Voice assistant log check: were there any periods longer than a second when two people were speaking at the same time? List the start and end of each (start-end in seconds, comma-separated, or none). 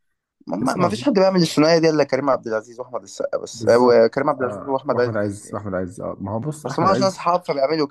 3.5-5.6